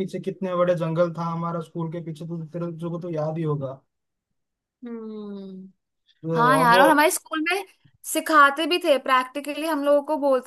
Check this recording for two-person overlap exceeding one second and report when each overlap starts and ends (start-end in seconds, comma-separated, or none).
none